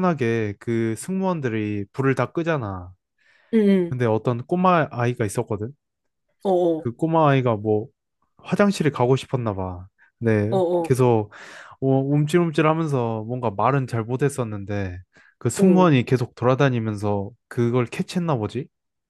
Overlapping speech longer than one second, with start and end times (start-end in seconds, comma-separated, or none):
none